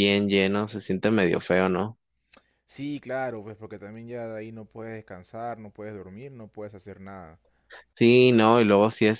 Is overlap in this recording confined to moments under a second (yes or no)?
yes